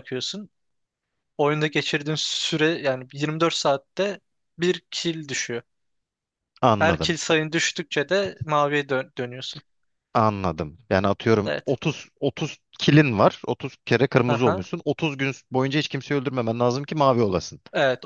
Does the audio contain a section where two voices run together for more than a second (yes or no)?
no